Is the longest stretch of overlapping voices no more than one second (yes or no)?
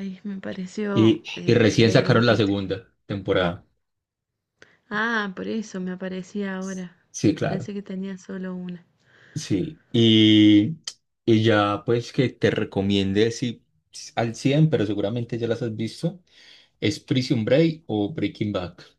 no